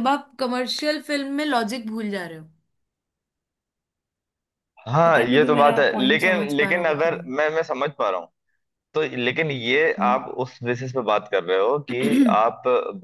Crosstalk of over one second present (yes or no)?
yes